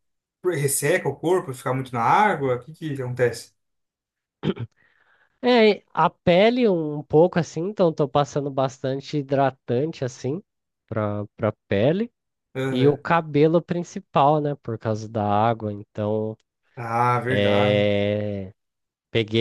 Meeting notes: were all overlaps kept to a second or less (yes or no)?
yes